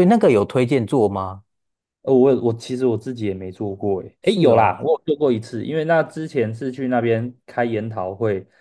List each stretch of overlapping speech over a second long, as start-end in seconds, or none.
none